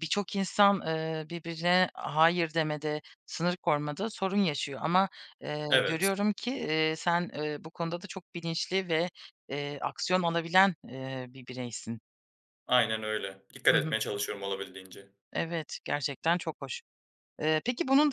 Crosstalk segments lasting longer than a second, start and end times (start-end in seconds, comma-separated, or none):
none